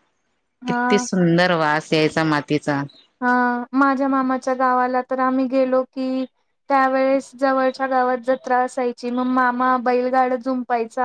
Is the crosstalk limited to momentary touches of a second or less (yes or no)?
yes